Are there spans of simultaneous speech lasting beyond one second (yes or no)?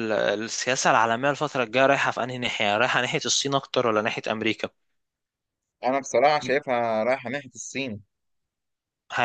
no